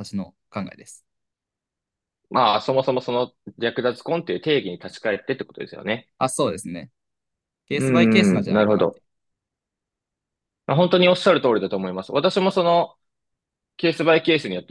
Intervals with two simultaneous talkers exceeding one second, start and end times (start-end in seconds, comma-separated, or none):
7.7-9.0